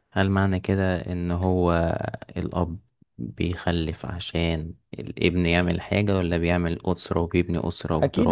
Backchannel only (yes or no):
no